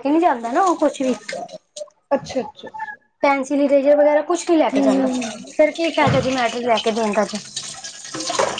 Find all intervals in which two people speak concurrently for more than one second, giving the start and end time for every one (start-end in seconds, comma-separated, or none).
none